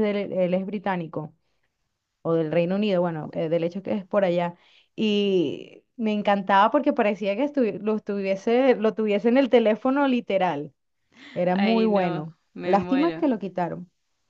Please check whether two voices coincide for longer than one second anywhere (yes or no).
yes